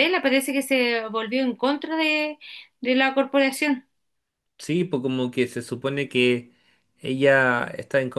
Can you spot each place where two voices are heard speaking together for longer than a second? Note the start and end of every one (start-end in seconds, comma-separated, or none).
none